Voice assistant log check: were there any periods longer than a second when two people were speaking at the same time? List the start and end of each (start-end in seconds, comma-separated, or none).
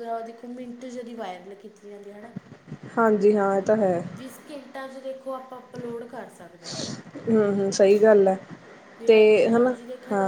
none